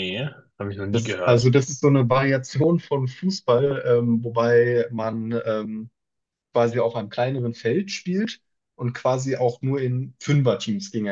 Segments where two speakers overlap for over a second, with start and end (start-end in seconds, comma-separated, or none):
none